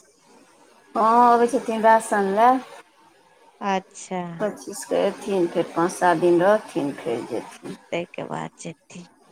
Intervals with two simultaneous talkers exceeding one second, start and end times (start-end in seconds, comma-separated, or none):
none